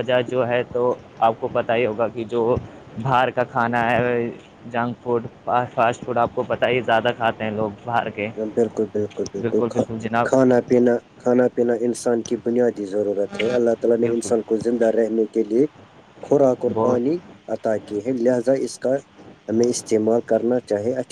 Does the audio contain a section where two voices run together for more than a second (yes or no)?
no